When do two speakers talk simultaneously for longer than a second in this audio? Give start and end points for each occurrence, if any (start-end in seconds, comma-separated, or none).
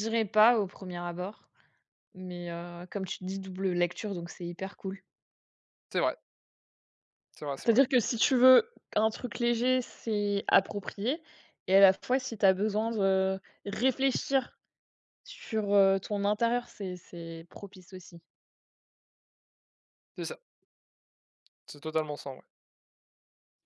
none